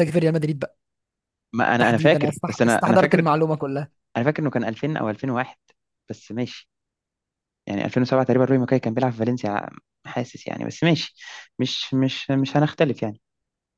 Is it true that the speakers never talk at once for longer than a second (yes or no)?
no